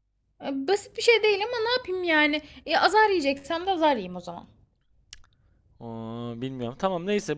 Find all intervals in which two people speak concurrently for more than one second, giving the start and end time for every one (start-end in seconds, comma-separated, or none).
none